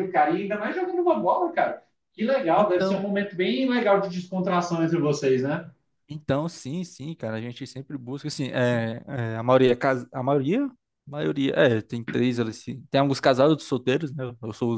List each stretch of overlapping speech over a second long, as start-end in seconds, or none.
none